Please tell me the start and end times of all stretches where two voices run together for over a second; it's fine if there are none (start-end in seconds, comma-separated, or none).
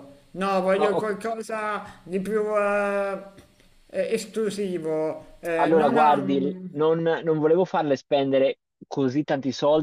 5.6-6.8